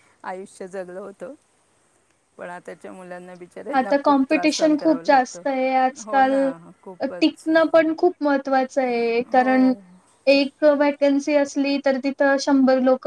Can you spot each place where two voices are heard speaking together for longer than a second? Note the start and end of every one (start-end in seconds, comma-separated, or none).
3.8-5.4